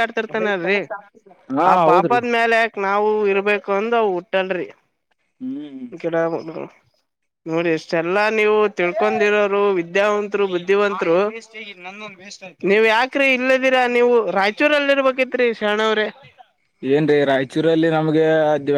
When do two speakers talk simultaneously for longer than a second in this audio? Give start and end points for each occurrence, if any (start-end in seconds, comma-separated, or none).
none